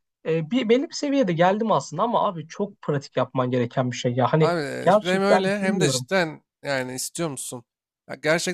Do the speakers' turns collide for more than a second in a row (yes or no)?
yes